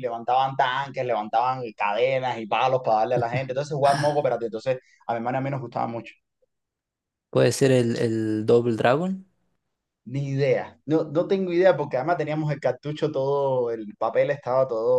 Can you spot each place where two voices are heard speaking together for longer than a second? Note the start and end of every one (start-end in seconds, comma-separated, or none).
none